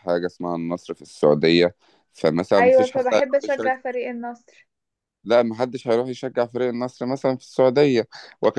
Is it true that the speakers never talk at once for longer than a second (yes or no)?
yes